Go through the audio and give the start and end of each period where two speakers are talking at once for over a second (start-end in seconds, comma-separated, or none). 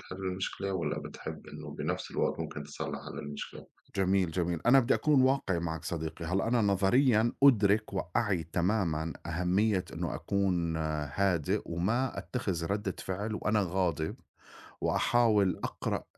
none